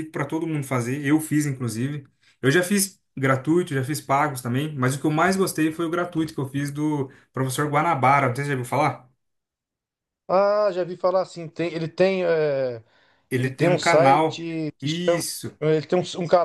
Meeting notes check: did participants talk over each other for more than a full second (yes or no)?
yes